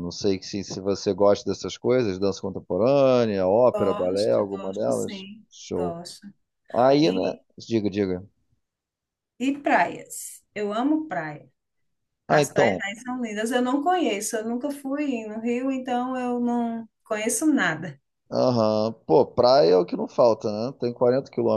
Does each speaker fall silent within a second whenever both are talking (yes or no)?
no